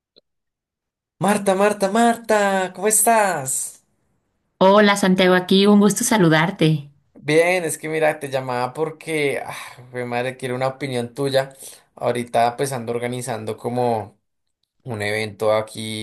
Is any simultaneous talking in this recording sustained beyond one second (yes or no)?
no